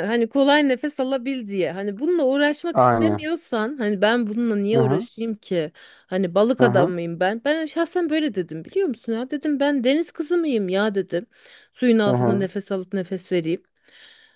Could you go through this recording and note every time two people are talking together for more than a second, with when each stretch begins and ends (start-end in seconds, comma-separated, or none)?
none